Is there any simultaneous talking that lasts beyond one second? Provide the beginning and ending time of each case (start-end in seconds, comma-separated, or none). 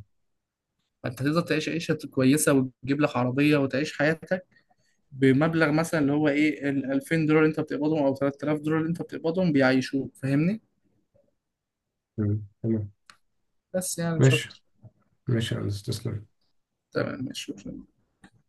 none